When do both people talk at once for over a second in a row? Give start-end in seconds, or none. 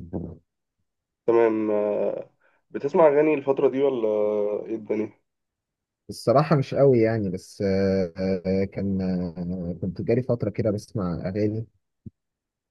none